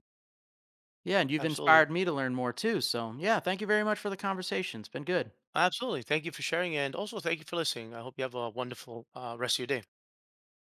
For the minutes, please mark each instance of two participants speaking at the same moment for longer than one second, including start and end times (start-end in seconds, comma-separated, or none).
none